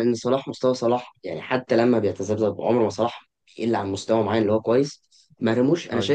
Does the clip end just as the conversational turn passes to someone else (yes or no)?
no